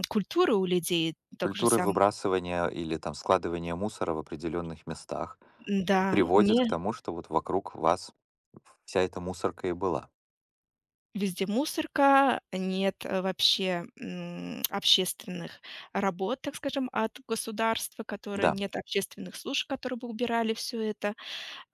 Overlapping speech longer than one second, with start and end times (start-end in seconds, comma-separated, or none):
none